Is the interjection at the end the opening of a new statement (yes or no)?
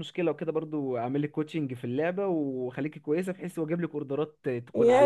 yes